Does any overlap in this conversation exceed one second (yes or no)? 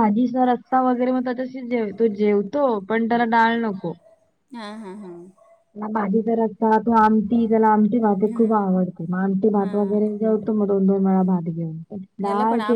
no